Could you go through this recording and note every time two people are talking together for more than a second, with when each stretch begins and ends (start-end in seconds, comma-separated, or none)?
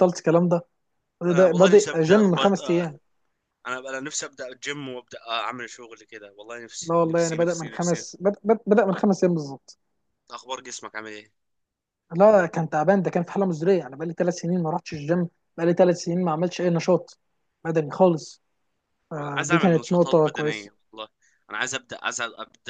1.3-2.9, 6.8-8.0, 19.2-20.7